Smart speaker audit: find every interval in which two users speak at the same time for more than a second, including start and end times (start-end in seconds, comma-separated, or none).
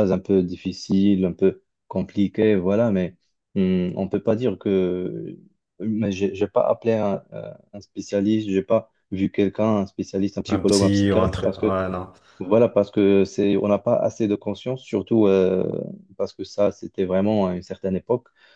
10.5-11.8